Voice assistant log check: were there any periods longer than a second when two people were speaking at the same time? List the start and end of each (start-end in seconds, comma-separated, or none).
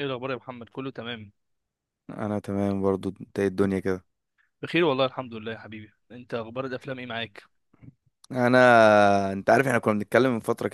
none